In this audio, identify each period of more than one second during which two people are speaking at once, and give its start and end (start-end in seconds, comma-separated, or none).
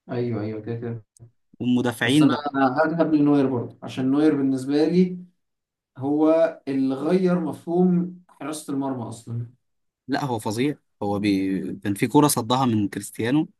none